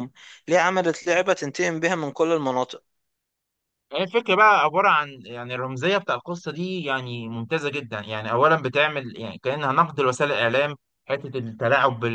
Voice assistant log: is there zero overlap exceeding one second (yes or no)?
yes